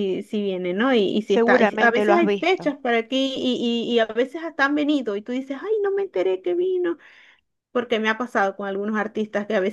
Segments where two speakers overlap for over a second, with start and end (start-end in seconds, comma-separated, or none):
1.2-2.8